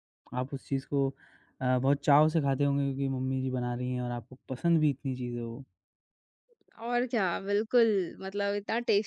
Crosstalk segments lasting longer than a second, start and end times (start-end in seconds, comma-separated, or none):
none